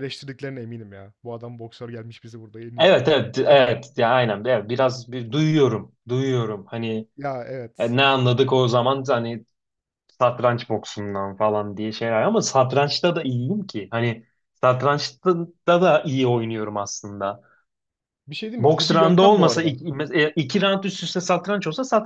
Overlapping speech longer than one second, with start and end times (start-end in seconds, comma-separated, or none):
18.6-19.8